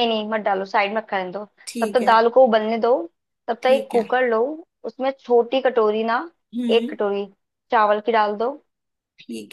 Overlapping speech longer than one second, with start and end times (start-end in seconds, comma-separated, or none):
none